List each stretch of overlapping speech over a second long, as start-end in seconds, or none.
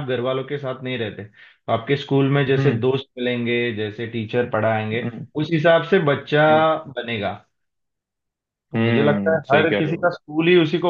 8.7-10.1